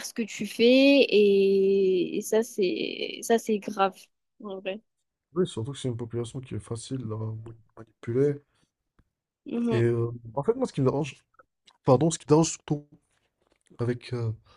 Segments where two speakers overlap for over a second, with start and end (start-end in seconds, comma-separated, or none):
none